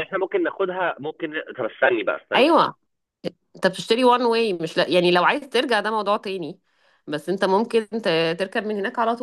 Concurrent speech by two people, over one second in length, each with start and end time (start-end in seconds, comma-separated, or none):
none